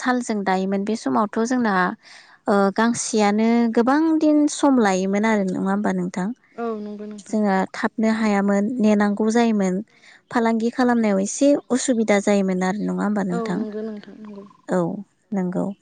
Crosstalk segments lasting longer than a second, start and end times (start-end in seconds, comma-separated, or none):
11.8-13.6